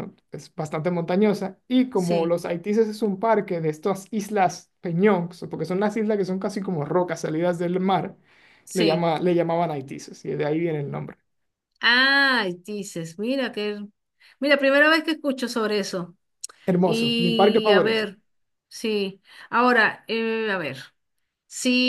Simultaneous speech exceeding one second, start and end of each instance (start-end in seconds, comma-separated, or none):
16.8-18.1